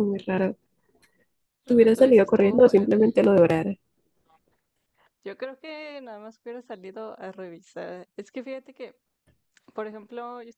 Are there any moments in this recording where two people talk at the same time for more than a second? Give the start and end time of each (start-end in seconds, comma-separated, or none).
1.7-3.0